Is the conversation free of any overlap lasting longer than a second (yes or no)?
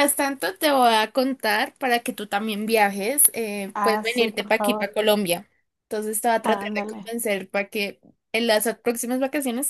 no